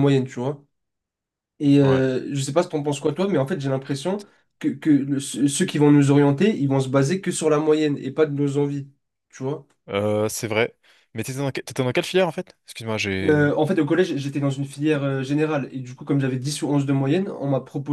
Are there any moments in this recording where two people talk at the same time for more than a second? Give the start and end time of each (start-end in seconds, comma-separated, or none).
none